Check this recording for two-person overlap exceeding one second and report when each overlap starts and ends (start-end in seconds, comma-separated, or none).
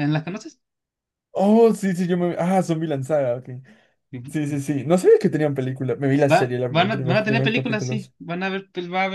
6.3-8.1